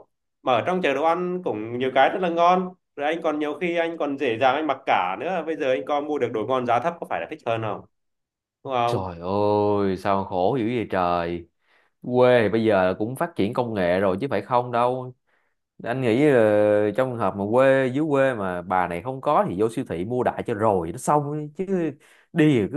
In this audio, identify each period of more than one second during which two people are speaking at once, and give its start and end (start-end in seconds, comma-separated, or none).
none